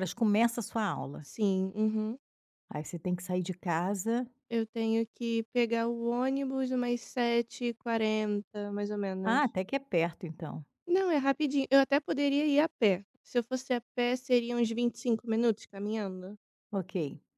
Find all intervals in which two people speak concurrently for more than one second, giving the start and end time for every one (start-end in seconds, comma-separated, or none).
none